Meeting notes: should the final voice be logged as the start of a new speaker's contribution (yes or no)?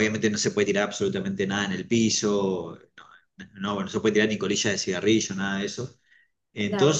no